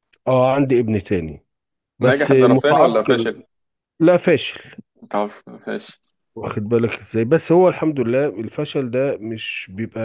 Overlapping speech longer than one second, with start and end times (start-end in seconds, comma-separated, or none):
2.0-3.3